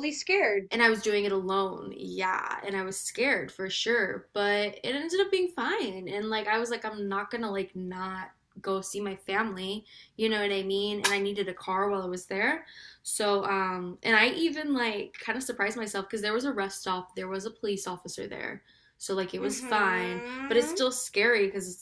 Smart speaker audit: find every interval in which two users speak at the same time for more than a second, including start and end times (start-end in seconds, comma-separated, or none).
19.4-20.7